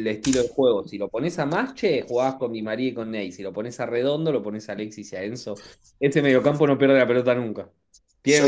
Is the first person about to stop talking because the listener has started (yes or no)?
yes